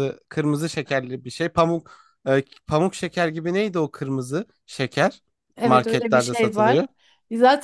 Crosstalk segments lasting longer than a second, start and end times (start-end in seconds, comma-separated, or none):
5.6-6.8